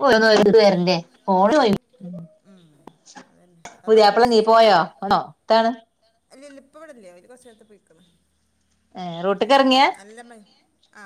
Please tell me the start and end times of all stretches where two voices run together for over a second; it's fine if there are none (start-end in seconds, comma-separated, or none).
none